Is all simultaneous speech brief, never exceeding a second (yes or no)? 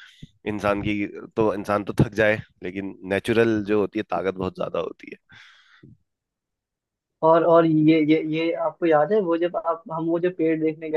yes